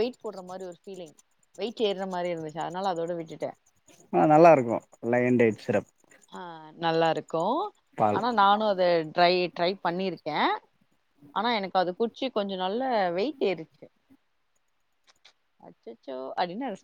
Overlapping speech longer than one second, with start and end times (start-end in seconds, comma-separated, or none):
none